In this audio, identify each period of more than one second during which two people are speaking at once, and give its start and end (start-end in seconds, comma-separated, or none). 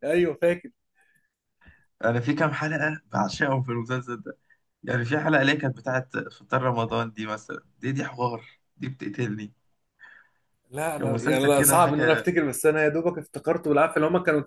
11.0-12.3